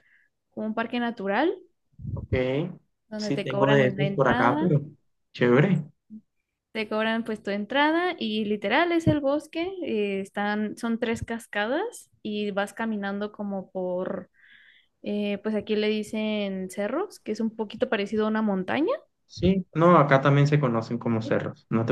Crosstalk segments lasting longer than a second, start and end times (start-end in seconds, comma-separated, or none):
3.2-4.7